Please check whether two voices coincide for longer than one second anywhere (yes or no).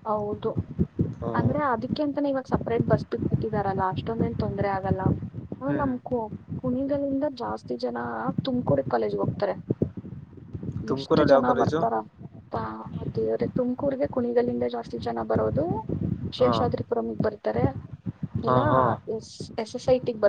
no